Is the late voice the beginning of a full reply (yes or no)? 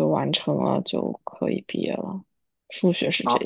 yes